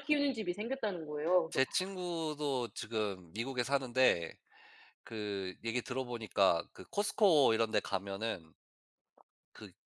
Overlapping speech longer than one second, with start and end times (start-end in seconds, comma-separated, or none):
none